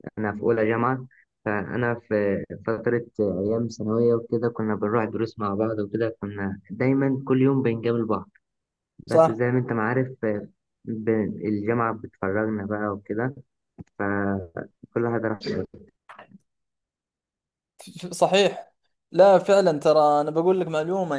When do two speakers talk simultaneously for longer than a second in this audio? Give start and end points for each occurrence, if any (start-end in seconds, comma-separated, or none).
none